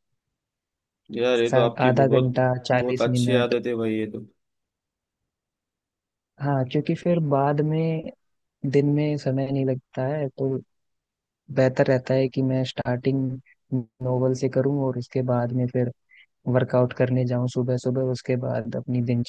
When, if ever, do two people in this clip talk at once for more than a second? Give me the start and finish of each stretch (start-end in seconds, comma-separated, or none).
1.5-3.5